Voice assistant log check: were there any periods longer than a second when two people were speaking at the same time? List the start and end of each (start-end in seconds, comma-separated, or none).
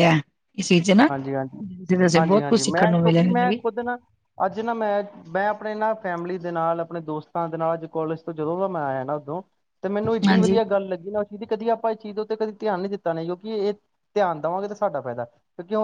2.2-3.6